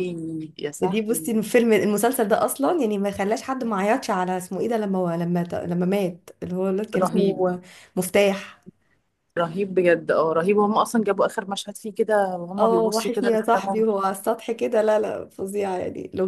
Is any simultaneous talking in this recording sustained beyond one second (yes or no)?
yes